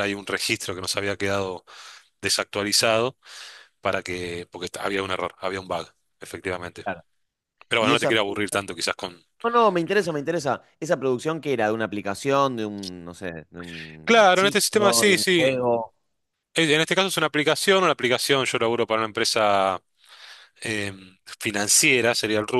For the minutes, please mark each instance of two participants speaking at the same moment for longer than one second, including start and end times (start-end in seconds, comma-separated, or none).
14.0-15.5